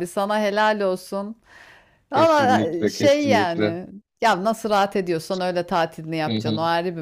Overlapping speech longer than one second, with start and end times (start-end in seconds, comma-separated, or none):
2.1-3.8